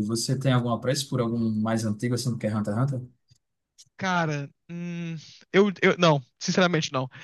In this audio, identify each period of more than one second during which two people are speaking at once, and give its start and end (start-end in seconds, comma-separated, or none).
none